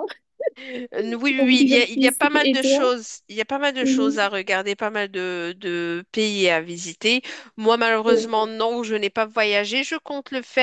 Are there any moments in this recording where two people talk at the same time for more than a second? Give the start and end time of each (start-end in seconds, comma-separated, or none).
1.4-2.9